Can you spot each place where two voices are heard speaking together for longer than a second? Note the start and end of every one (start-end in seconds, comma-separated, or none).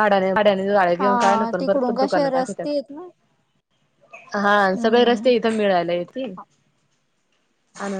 1.0-2.6